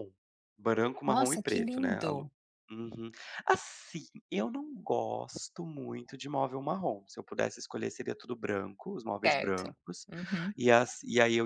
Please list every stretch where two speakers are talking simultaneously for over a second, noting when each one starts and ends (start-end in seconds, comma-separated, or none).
1.1-2.3